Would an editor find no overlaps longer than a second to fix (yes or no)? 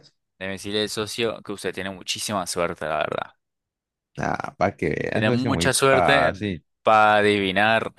no